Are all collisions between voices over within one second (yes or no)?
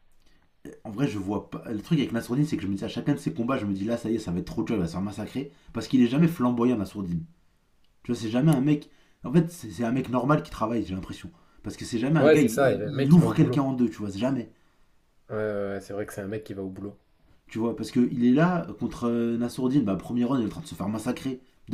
no